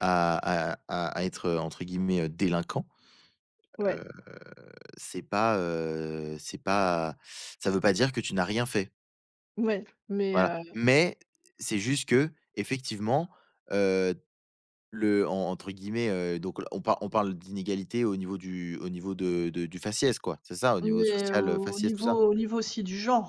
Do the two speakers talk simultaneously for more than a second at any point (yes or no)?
yes